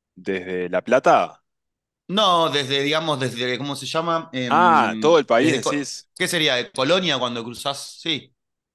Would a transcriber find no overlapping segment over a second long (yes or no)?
no